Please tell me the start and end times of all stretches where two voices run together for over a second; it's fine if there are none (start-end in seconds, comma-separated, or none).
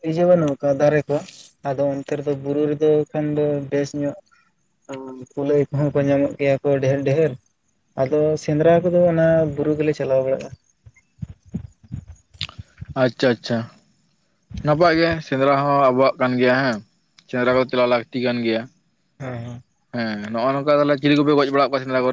none